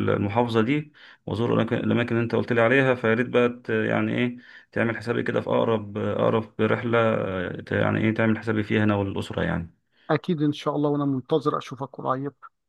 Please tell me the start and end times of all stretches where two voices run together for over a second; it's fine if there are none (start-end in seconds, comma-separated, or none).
none